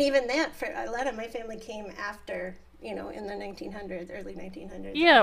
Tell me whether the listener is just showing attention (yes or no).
no